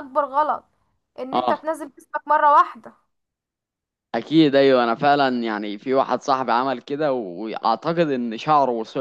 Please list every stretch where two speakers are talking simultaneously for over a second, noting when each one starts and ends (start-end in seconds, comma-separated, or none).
none